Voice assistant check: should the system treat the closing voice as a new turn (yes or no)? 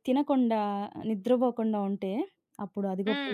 no